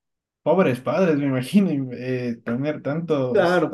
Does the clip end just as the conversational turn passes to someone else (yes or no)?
yes